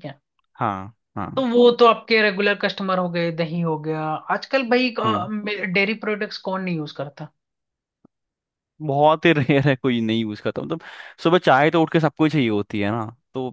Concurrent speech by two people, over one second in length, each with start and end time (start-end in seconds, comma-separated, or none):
none